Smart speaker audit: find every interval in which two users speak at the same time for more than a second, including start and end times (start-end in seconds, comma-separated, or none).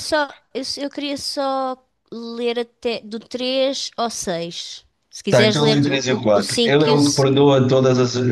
5.3-7.2